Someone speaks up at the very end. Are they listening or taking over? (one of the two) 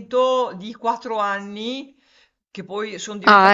listening